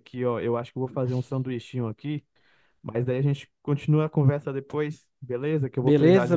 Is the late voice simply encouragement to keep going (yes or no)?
no